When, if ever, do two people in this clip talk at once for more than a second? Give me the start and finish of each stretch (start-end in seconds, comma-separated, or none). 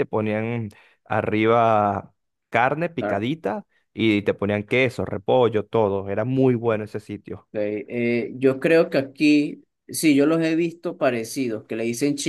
none